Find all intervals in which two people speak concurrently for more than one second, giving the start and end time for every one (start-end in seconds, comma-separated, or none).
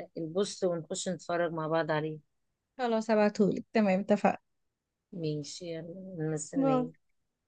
none